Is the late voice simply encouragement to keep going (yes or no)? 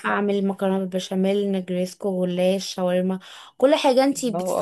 no